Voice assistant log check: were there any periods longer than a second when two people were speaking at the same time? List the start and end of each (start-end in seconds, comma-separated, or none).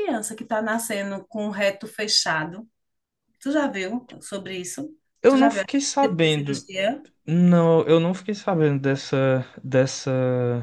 5.3-6.7